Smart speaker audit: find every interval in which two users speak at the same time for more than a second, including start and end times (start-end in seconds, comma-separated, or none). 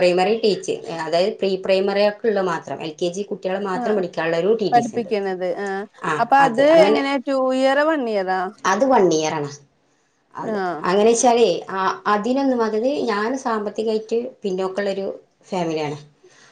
none